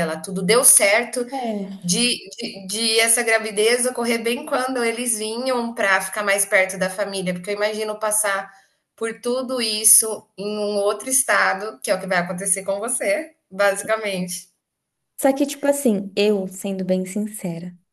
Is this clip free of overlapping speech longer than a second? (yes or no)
yes